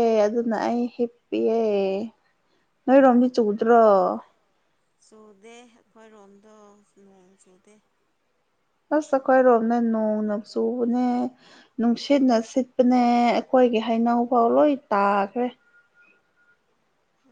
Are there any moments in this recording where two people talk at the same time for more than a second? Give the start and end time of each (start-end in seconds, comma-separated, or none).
none